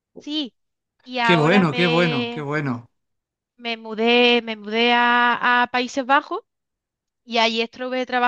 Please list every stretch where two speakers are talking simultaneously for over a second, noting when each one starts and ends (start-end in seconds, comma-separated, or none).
1.2-2.4